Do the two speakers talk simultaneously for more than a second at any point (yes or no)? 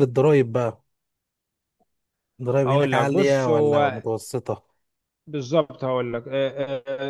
yes